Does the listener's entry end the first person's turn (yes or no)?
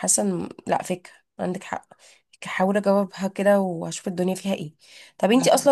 no